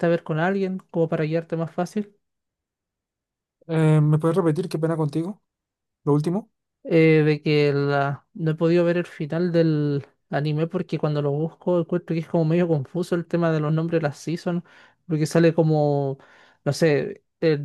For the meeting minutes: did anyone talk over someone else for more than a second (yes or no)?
no